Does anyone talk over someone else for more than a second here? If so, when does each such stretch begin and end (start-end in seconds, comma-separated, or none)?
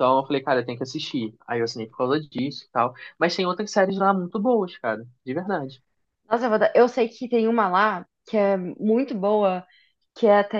none